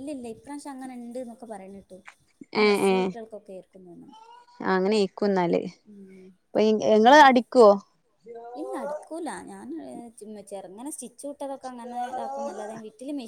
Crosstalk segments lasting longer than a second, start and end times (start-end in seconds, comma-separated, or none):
none